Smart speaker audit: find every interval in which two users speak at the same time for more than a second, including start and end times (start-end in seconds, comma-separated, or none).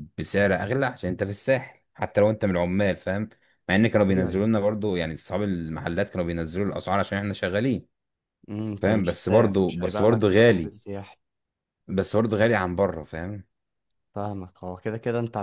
8.8-10.7